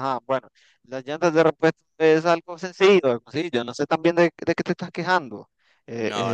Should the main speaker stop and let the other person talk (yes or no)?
no